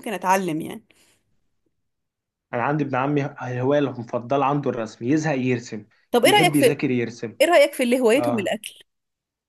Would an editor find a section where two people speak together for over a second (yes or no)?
no